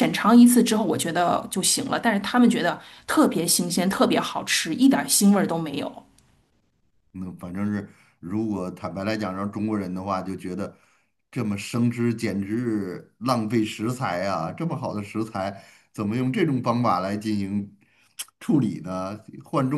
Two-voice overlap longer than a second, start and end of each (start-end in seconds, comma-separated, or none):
none